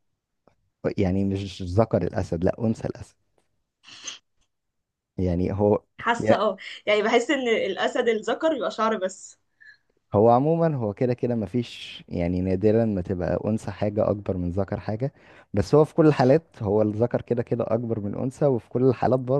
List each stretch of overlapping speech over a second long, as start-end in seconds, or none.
none